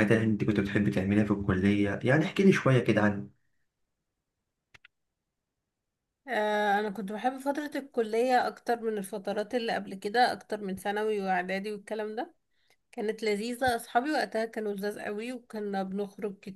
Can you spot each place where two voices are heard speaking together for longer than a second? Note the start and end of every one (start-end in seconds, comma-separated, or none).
none